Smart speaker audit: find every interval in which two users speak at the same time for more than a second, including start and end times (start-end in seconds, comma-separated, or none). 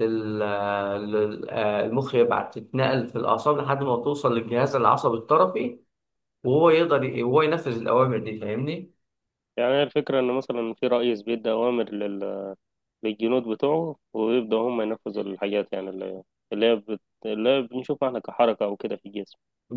none